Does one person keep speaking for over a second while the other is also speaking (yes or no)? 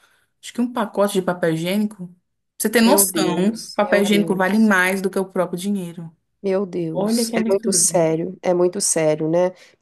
yes